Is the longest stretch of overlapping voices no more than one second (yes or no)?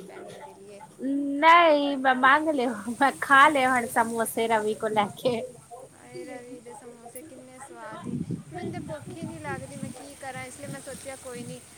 yes